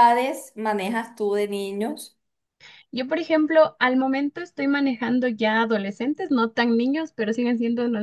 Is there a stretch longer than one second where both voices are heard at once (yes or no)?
no